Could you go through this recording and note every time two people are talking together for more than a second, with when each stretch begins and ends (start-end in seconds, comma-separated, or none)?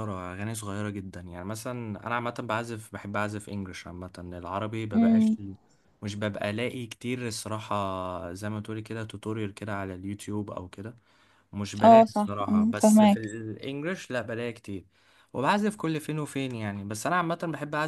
11.8-13.2